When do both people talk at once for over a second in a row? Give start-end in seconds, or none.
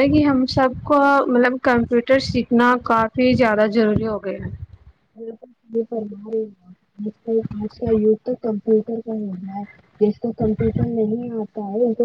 none